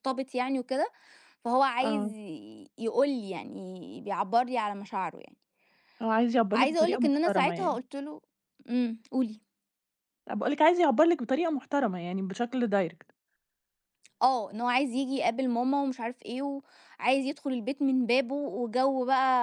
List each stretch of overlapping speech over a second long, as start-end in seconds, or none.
6.5-7.8